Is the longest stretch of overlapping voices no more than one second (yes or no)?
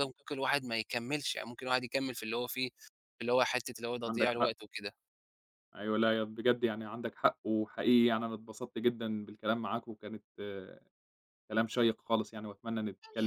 yes